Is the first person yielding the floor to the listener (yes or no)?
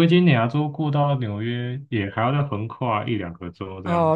yes